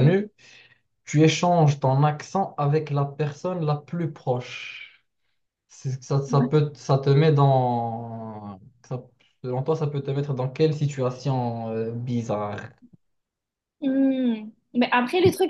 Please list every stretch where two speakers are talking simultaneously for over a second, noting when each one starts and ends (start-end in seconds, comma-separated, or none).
none